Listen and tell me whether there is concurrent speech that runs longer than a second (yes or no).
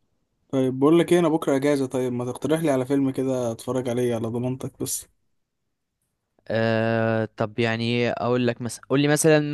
no